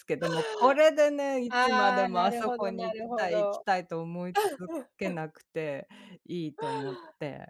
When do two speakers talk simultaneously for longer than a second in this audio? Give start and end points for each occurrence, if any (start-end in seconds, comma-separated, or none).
1.5-3.6